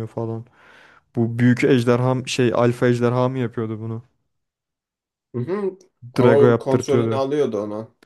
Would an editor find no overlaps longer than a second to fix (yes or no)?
no